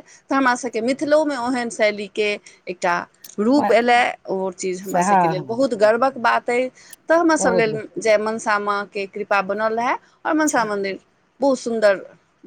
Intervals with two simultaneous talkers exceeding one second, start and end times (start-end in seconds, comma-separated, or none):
4.7-6.2